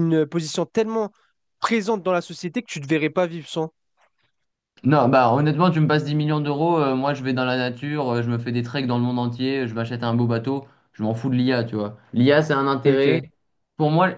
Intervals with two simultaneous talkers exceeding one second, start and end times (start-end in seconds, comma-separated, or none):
none